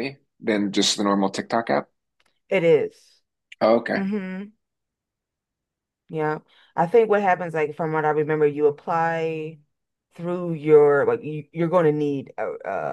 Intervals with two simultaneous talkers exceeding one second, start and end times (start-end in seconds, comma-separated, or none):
none